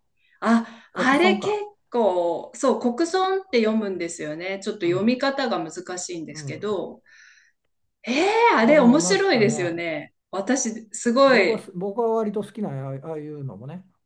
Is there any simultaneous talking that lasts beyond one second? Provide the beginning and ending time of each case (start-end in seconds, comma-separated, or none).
8.6-9.8